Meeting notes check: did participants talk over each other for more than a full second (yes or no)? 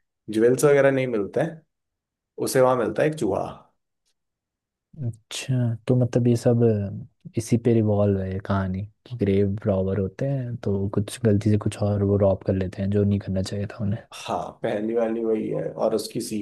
no